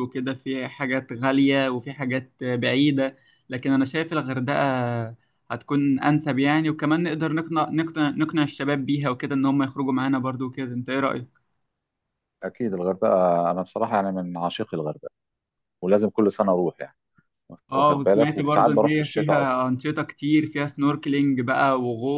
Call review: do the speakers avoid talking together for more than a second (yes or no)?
no